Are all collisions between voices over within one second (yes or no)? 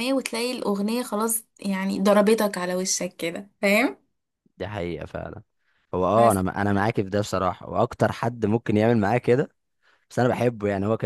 yes